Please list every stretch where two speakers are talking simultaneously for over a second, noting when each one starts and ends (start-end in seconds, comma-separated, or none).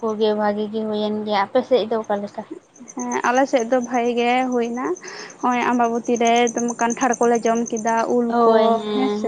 none